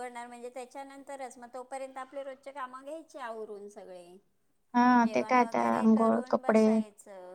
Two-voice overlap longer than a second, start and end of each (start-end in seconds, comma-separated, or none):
5.0-6.7